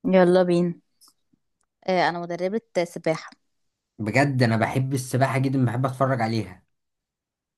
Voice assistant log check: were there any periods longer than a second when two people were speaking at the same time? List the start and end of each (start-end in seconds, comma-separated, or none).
none